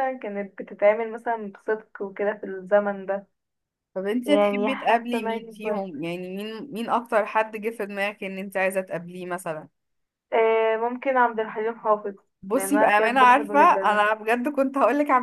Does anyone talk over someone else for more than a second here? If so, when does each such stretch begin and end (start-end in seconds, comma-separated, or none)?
4.2-6.0, 12.5-14.0